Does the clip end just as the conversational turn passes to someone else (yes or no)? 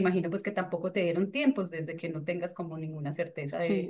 yes